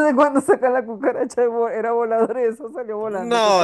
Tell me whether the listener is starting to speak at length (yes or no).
yes